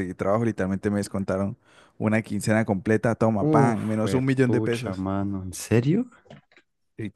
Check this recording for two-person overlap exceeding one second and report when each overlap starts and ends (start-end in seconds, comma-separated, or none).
3.4-5.0